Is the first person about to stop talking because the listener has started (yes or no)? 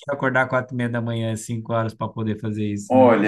yes